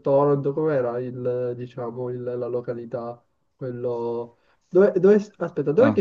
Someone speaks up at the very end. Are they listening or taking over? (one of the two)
listening